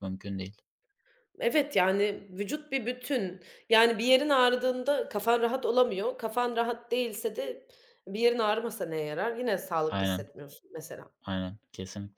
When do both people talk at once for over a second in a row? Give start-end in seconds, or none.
none